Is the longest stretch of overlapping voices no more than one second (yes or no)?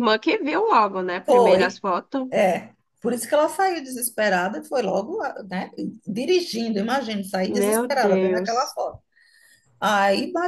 no